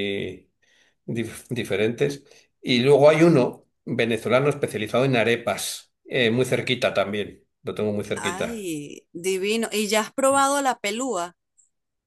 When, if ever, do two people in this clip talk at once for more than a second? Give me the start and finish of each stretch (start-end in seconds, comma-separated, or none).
none